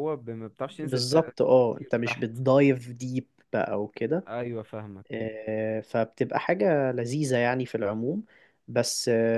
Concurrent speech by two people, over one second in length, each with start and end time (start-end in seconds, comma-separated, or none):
0.7-2.3